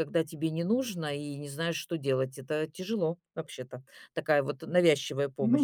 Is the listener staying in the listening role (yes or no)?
no